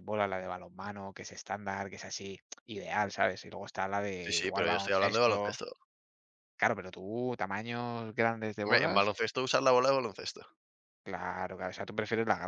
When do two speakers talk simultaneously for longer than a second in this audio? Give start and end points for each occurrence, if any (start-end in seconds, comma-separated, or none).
4.2-5.6